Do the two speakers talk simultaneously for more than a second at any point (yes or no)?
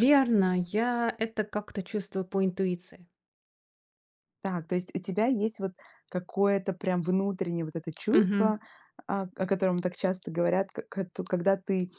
no